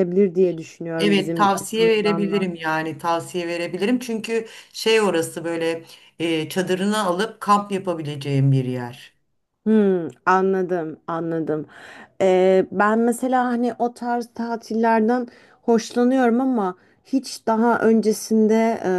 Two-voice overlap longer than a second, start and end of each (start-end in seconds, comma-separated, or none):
1.0-2.5